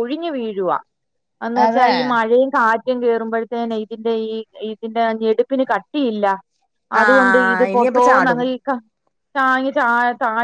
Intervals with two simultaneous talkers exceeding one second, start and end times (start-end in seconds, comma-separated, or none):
7.0-8.4